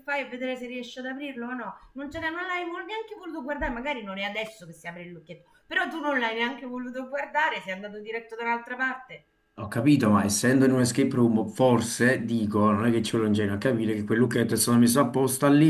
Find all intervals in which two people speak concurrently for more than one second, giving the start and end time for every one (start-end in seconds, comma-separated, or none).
none